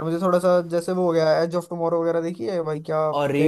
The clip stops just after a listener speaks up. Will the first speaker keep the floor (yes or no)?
no